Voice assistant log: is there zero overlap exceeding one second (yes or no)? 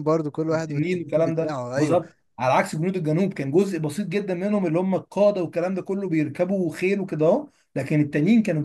no